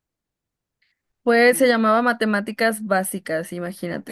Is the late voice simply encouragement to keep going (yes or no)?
no